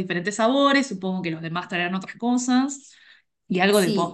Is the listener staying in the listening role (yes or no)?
no